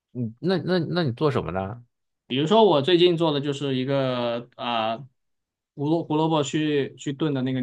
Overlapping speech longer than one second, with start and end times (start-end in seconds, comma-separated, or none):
none